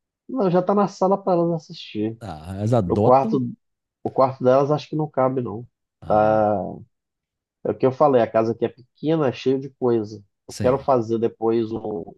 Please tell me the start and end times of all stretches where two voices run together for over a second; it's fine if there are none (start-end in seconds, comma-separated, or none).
none